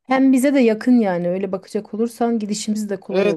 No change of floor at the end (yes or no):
no